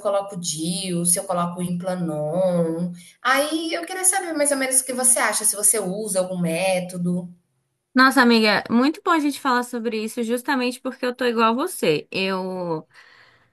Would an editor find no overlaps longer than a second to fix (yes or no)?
yes